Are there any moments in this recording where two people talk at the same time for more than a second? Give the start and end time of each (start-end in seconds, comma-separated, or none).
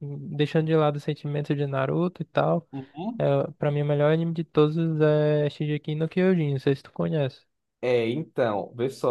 none